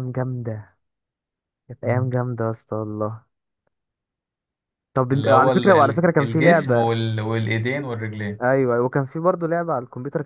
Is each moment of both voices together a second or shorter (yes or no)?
no